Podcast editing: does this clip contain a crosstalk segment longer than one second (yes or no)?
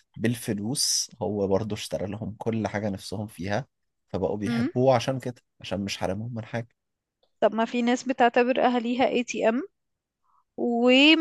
no